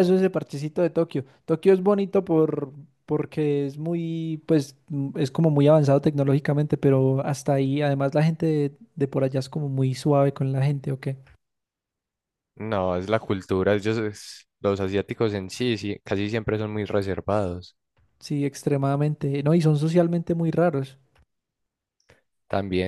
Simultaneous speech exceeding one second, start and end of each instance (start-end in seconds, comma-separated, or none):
none